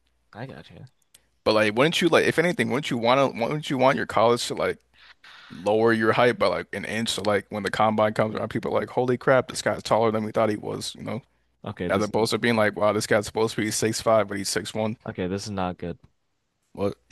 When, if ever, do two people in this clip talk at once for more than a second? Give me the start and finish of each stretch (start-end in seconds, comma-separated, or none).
none